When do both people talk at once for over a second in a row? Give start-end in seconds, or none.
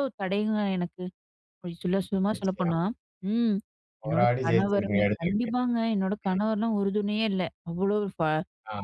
4.0-5.5